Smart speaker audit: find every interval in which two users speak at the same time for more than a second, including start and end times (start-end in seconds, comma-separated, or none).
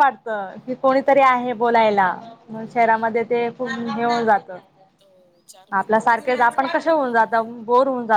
5.8-7.5